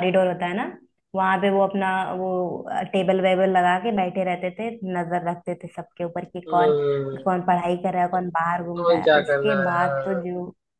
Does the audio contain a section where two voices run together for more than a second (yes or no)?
yes